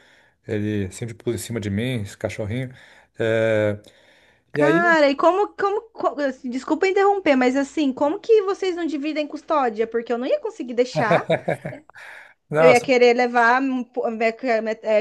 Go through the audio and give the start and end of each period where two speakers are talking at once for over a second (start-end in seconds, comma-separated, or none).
none